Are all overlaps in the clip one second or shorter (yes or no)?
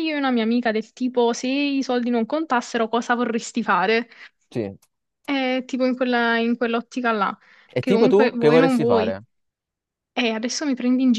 no